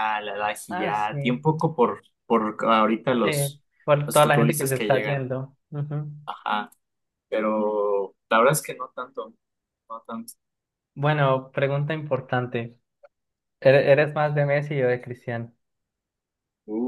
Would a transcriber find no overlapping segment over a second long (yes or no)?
no